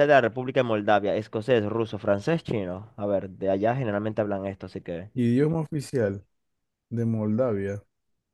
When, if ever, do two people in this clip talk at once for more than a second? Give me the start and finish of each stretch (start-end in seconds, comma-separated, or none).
none